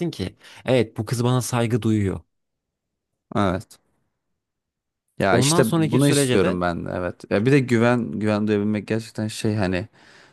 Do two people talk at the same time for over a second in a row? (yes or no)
yes